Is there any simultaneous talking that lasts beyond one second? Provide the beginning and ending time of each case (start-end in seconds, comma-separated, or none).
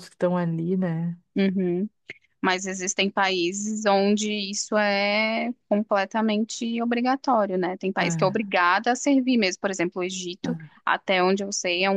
none